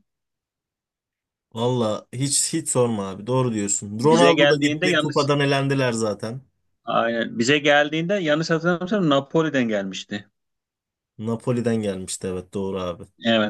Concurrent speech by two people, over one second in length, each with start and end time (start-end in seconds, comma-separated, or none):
4.0-5.3